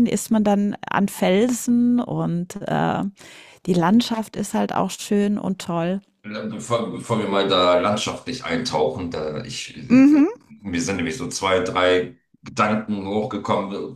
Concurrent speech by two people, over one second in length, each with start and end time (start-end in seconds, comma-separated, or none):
none